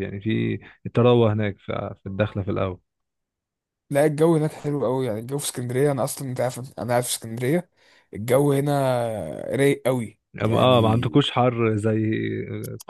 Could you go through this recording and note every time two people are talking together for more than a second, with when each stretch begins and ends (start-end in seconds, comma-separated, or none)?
none